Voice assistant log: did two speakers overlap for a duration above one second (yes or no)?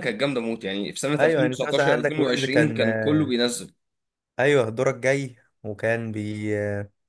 yes